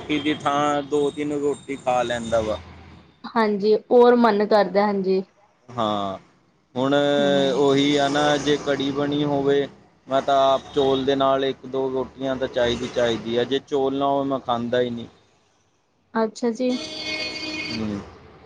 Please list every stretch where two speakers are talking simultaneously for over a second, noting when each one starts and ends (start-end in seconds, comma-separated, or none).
none